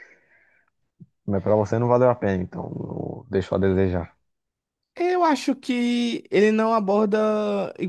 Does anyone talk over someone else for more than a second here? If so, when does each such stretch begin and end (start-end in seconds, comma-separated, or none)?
none